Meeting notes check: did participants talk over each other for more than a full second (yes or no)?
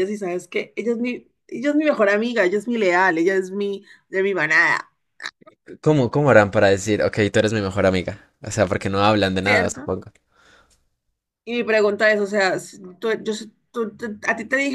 no